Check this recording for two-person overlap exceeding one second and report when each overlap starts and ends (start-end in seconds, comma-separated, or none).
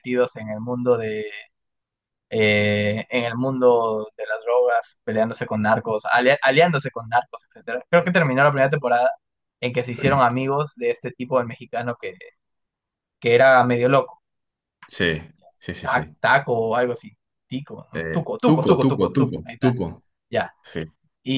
17.9-19.8